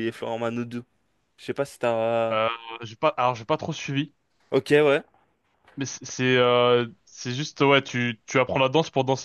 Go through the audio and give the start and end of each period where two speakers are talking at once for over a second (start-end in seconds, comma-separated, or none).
none